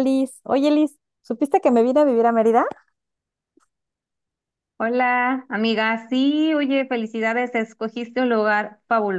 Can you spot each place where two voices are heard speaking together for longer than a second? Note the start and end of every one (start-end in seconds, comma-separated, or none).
none